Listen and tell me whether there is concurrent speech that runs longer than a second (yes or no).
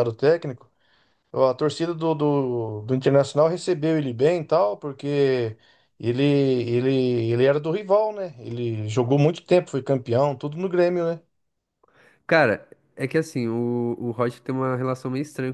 no